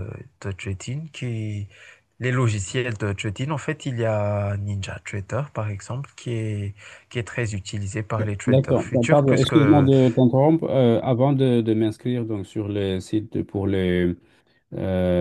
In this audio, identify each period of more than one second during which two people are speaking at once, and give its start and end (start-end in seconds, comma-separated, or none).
8.5-9.9